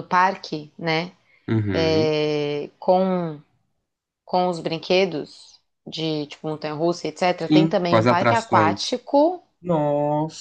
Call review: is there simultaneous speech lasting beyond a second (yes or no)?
yes